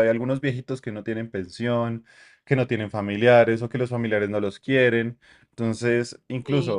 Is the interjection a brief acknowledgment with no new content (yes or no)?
no